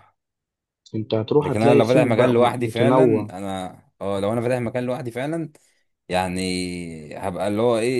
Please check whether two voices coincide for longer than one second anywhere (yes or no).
yes